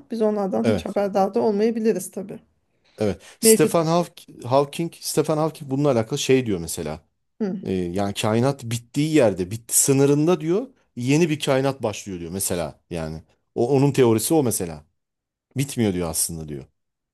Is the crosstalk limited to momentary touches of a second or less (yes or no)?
yes